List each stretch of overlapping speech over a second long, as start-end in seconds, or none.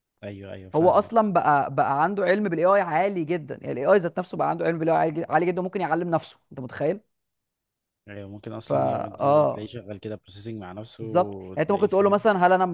11.0-12.2